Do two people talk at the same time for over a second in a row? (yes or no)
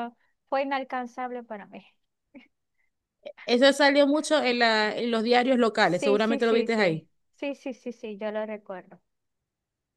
yes